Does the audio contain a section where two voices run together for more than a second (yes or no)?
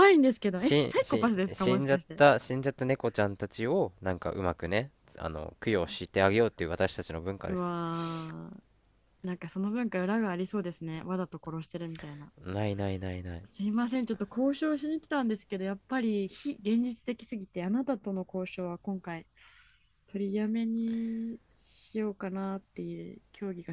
yes